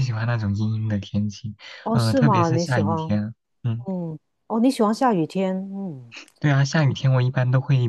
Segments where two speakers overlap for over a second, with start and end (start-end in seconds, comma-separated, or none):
1.9-3.2